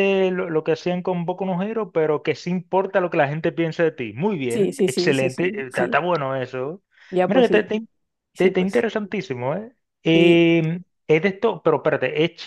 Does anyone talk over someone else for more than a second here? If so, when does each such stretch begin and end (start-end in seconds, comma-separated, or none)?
4.5-6.0